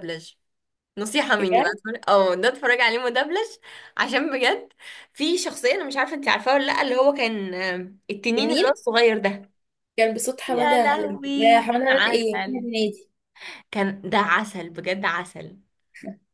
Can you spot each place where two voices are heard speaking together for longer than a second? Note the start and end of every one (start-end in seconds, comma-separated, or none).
10.5-12.6